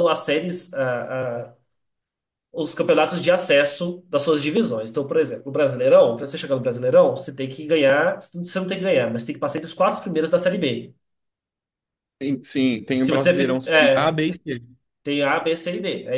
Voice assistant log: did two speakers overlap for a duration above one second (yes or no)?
yes